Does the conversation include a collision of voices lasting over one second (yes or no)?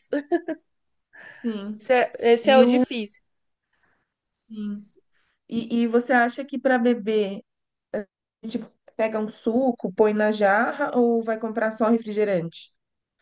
no